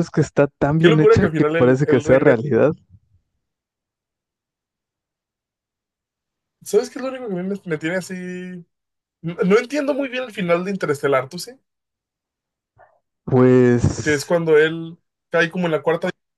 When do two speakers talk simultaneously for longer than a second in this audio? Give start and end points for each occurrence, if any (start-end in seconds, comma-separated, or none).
0.8-2.4